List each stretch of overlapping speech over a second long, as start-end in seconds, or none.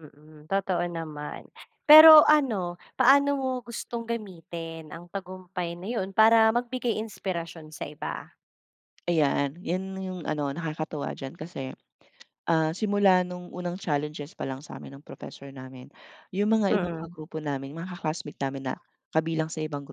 none